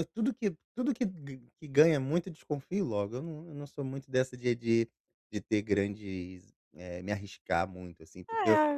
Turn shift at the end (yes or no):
no